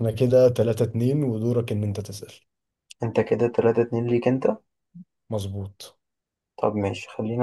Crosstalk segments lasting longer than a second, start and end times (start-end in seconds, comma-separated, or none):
none